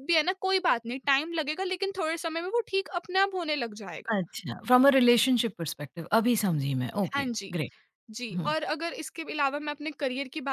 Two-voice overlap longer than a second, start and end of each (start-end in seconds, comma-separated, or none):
none